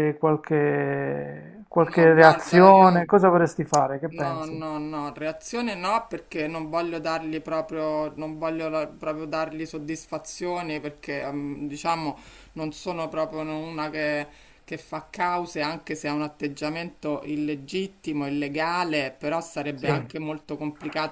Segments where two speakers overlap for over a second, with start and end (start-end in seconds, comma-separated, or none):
1.8-3.1